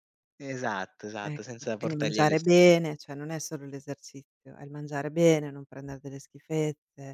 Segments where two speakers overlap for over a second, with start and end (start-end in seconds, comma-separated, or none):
1.2-2.7